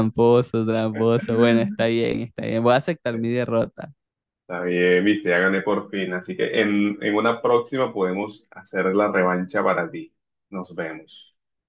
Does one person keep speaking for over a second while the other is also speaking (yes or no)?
no